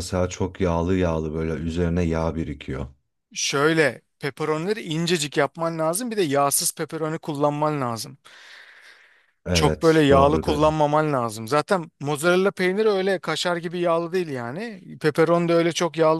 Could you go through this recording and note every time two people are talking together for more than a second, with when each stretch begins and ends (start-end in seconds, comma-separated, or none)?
9.5-10.8